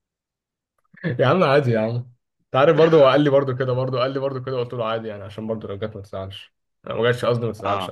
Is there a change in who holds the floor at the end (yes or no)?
yes